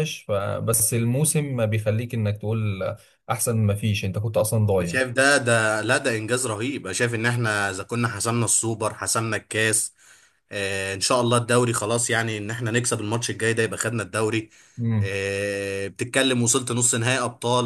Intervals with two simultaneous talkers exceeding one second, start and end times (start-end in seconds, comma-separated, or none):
none